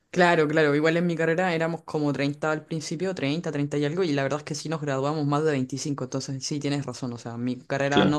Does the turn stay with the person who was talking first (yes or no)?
yes